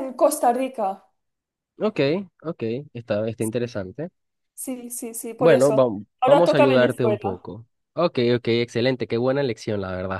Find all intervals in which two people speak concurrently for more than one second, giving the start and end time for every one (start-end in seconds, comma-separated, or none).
5.4-7.4